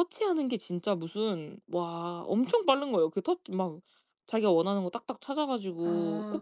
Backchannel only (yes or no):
no